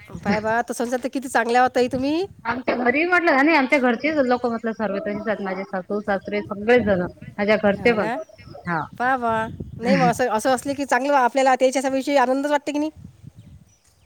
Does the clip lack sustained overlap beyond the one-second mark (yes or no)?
yes